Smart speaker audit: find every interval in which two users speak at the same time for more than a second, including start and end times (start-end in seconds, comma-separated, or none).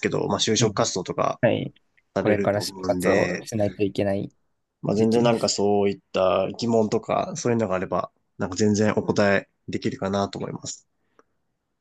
2.2-3.5